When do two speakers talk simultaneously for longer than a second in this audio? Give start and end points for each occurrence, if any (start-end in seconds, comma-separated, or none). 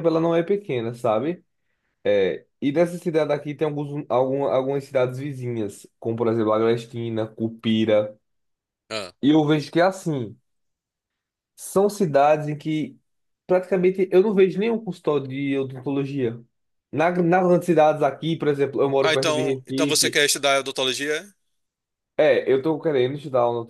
19.0-20.2